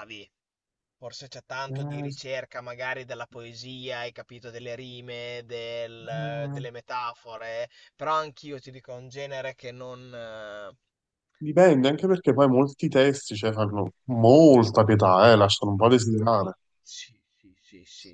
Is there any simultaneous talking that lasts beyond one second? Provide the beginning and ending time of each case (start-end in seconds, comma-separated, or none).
none